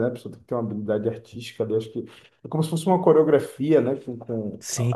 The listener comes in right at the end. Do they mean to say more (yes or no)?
yes